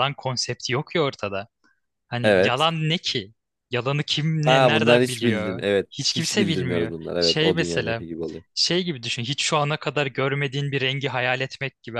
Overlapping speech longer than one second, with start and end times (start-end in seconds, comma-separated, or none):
4.4-8.0